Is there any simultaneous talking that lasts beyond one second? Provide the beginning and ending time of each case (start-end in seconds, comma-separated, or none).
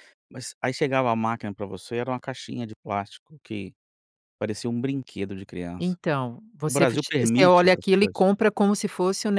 6.7-8.3